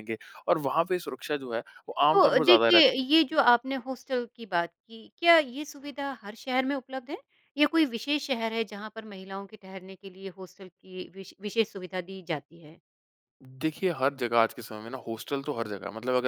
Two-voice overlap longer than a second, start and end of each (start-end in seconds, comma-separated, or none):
2.1-3.4